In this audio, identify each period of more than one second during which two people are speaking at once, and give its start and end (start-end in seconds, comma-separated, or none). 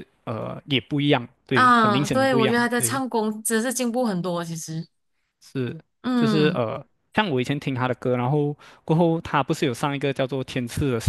1.5-3.0